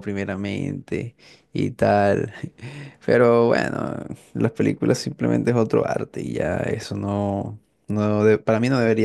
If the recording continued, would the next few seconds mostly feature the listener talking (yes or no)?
no